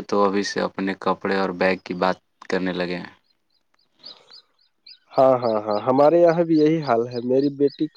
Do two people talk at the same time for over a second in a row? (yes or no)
no